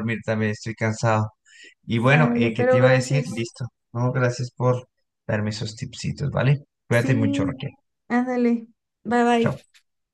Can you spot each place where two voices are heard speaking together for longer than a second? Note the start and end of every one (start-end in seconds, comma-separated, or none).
1.9-3.5